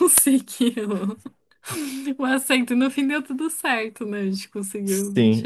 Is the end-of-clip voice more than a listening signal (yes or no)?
yes